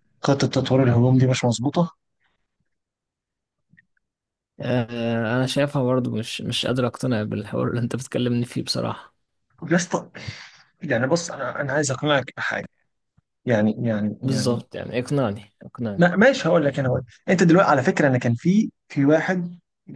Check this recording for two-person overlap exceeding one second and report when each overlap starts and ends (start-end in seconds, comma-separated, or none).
none